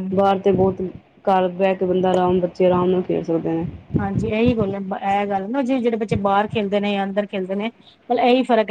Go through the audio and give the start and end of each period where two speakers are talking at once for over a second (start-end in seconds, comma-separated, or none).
none